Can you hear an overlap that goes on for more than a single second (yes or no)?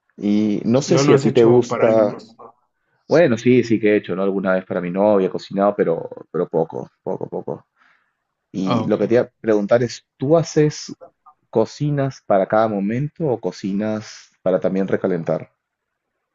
yes